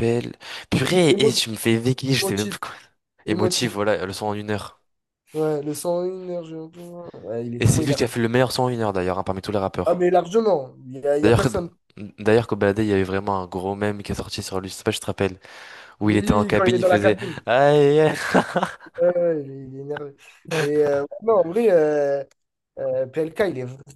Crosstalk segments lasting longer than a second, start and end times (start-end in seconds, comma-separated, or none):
16.0-17.4